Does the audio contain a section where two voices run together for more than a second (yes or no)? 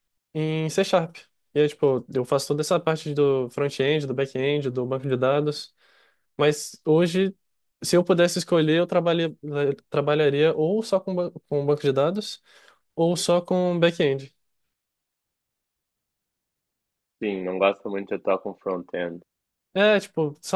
no